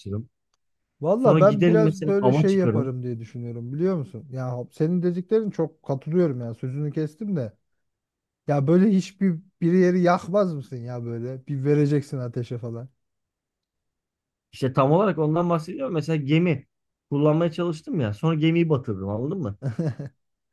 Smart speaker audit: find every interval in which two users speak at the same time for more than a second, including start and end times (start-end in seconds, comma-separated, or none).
1.2-2.9